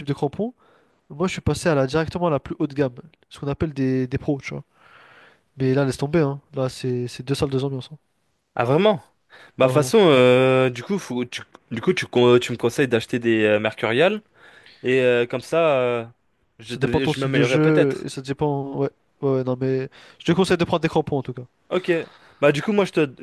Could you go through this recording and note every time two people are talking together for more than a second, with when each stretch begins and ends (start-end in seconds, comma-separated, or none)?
16.6-18.1